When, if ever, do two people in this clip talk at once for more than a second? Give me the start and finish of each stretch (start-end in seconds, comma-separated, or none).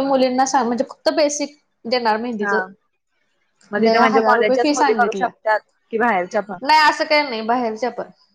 3.8-5.3